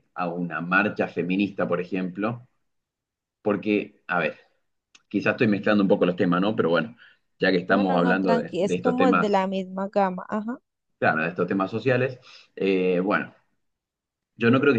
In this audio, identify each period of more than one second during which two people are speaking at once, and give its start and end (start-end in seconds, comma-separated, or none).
7.7-9.4